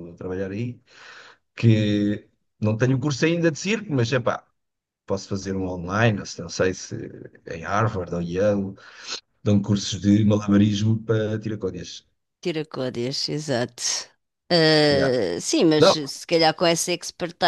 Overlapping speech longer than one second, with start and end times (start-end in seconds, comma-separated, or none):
none